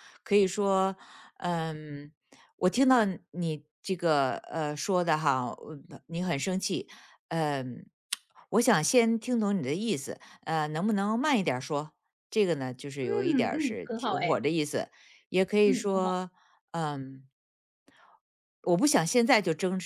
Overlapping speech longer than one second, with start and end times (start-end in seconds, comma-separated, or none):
13.0-14.4